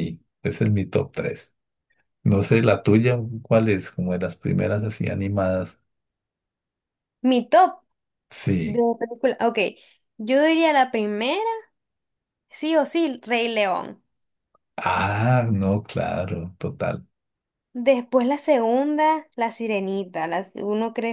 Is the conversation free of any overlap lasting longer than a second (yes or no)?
yes